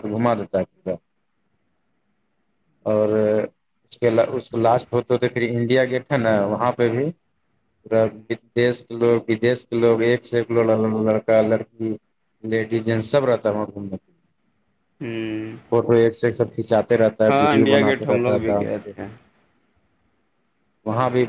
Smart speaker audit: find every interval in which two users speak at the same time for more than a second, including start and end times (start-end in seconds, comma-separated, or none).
17.3-18.9